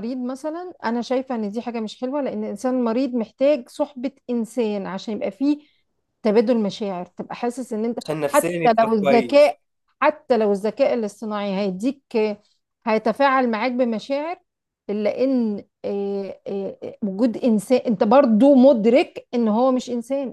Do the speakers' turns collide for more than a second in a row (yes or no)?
yes